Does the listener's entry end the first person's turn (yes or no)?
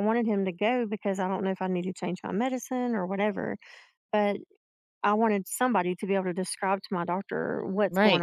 yes